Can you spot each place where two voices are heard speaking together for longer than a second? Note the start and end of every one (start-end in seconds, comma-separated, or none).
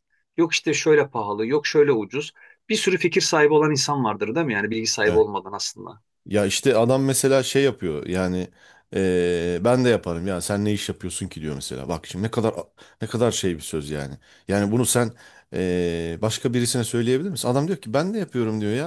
none